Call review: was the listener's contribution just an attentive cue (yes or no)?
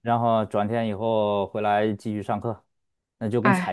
yes